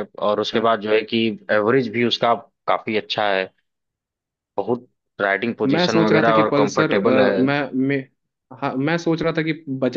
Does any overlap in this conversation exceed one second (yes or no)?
yes